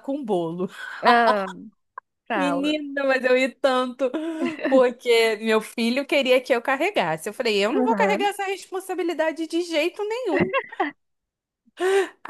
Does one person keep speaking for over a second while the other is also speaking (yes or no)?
no